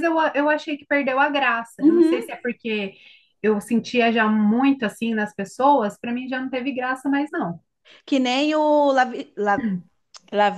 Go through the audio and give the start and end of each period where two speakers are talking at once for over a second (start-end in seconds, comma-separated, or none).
none